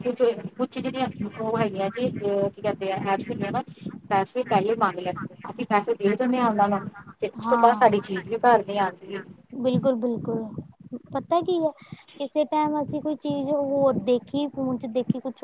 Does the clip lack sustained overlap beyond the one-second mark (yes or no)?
yes